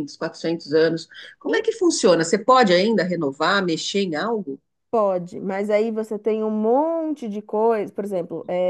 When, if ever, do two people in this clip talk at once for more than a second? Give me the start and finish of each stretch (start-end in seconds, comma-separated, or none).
none